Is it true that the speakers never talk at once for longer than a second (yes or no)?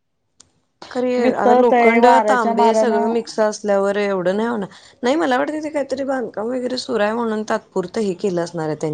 no